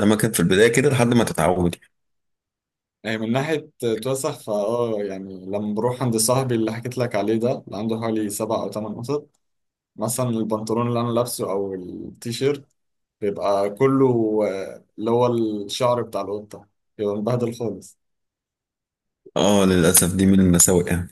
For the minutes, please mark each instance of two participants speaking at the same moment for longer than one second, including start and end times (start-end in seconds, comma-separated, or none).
none